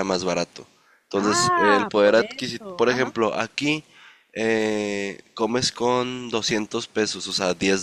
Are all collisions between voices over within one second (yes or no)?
no